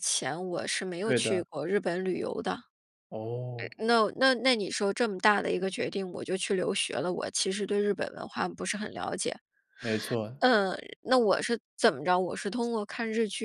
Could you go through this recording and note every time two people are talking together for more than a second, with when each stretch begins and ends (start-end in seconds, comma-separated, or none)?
none